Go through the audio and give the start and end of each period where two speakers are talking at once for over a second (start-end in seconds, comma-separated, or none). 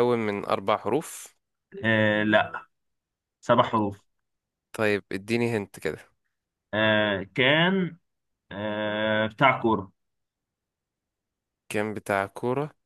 none